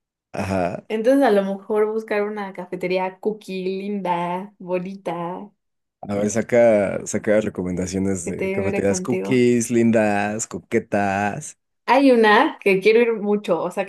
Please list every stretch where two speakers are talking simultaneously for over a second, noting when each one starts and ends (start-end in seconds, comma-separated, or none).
8.2-9.4